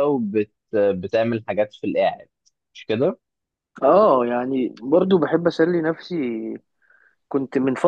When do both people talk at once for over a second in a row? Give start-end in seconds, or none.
none